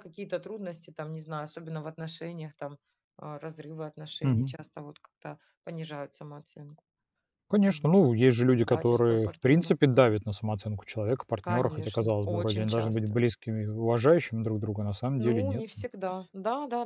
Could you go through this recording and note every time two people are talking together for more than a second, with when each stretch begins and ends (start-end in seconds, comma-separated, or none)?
8.6-10.2, 11.4-13.2